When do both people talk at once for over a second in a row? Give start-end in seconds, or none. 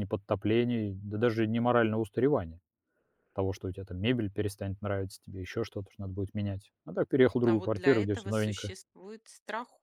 7.5-8.7